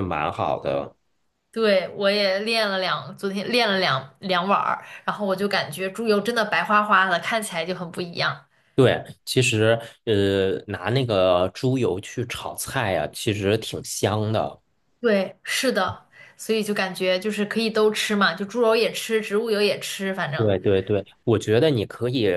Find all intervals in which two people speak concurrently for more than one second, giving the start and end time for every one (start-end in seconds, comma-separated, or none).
none